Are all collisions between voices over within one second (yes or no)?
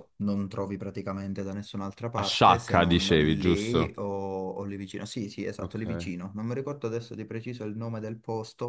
no